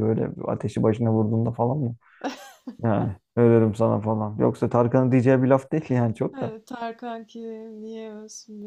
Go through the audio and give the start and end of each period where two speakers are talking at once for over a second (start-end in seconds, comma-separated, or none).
none